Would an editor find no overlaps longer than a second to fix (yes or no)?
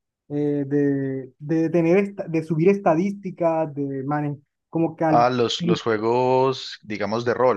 yes